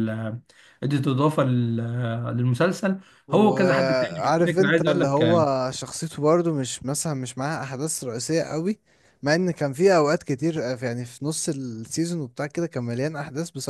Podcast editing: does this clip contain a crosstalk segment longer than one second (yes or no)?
yes